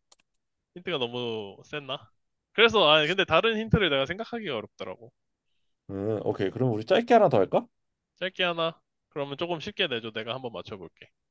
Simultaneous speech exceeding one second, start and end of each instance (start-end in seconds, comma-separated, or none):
none